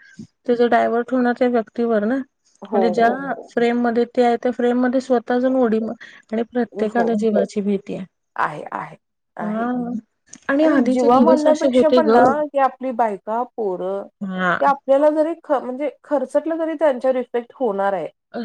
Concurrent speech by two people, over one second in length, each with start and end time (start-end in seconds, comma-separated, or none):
10.7-12.2